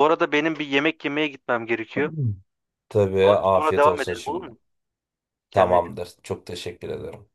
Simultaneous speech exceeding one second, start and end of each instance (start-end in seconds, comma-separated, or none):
3.2-4.5